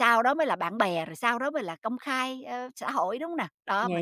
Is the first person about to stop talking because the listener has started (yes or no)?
yes